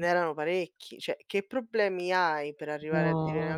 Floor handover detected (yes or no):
no